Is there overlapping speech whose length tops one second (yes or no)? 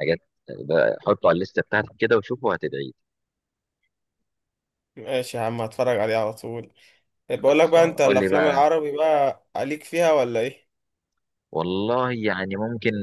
yes